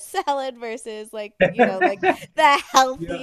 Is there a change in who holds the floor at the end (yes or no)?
no